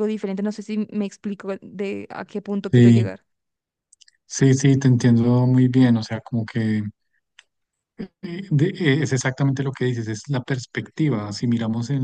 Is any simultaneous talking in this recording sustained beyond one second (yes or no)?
no